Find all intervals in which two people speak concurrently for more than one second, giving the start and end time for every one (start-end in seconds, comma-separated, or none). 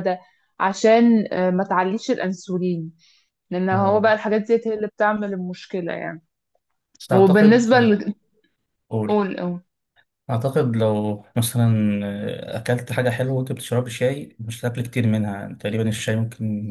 none